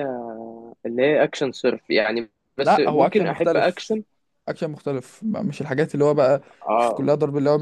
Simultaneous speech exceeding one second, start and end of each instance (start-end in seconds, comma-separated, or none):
2.6-4.0